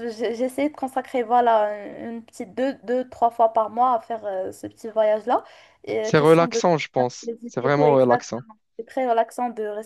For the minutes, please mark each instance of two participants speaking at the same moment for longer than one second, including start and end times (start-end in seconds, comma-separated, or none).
7.2-8.4